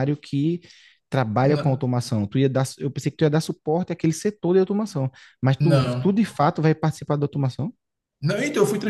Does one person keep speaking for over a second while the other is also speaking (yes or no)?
no